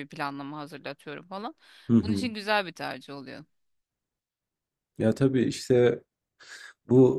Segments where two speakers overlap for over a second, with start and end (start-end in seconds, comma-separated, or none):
none